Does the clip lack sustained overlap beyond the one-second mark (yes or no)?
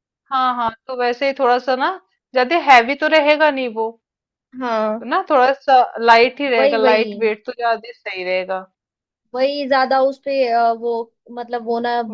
yes